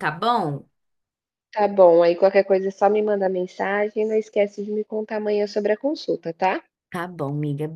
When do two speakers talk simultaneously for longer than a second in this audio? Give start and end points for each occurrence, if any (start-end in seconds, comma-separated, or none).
none